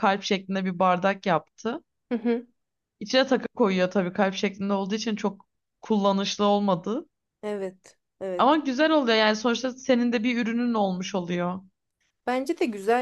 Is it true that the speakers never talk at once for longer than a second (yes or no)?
yes